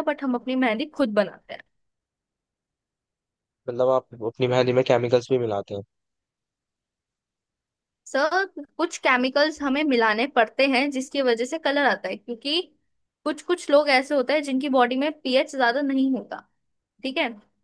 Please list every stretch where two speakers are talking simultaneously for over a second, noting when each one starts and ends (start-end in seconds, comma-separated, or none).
none